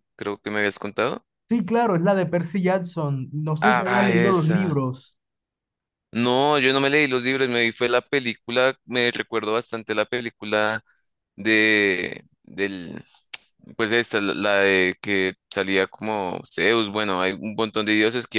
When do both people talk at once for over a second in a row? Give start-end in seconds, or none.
3.6-4.8